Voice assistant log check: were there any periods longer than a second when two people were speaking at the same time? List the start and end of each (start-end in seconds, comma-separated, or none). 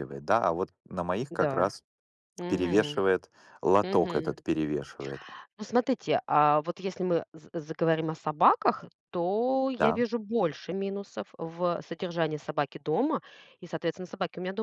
none